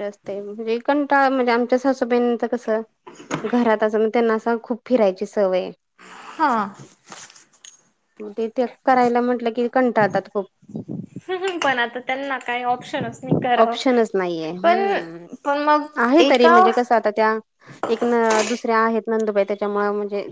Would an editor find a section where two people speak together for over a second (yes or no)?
no